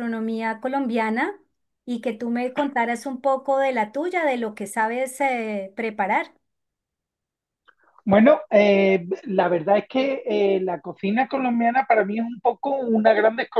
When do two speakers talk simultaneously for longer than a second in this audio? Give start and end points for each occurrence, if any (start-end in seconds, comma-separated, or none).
none